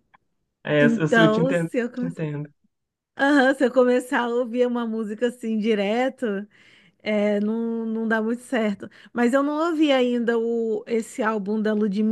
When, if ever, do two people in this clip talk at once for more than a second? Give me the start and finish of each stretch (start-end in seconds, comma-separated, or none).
0.8-2.2